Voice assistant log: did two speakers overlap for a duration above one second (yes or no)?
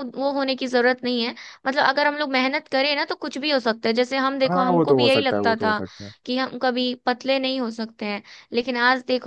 yes